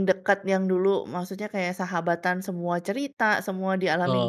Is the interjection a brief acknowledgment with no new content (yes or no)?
no